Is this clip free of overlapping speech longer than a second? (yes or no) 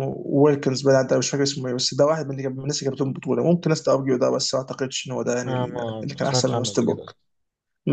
no